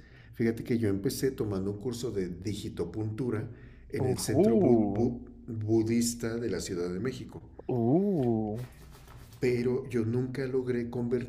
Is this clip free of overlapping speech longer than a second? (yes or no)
no